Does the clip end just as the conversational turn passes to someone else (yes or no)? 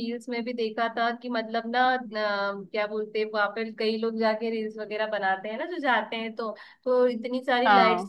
no